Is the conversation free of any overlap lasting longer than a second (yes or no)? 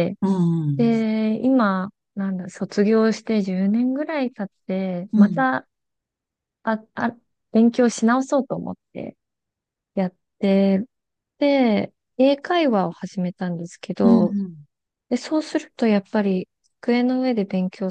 yes